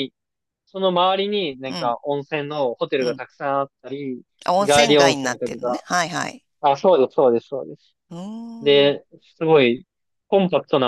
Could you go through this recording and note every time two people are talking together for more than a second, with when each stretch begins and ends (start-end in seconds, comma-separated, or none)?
4.6-5.8